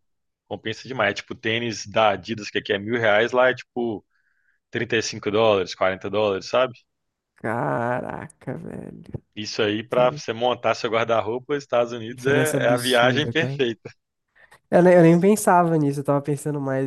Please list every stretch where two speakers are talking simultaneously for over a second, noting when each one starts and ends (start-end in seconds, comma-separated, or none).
12.1-13.6